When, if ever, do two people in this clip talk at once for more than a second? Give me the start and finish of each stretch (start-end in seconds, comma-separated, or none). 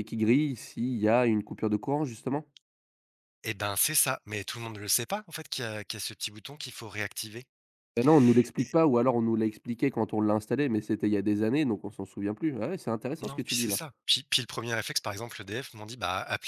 none